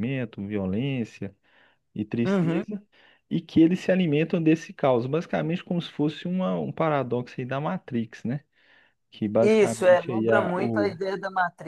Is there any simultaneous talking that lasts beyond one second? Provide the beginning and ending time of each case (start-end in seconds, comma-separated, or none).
9.4-10.9